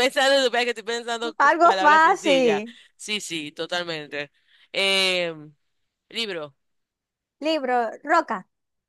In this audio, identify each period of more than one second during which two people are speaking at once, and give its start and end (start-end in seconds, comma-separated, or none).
1.5-2.8